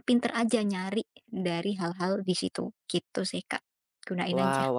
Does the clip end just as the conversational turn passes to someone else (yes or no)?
yes